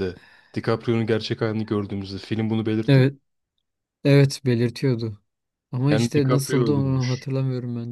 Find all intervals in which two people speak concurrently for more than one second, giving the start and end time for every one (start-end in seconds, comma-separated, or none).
5.9-7.3